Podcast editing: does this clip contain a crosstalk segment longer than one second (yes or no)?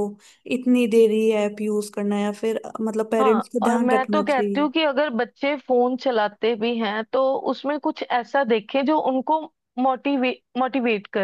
yes